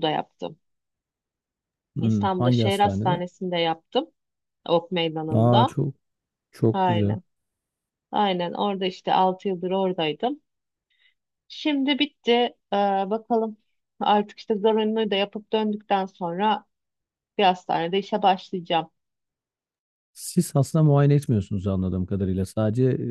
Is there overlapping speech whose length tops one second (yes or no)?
yes